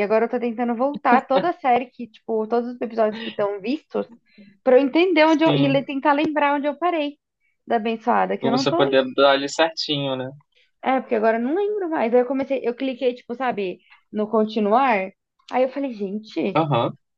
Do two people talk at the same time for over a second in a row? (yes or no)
no